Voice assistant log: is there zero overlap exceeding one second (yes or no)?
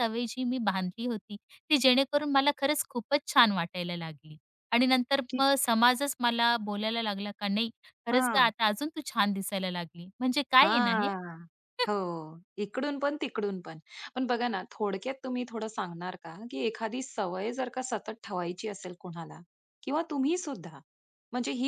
yes